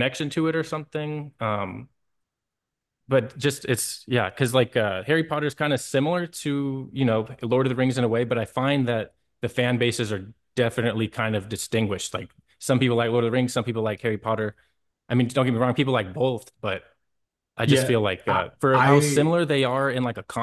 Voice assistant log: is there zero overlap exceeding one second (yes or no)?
no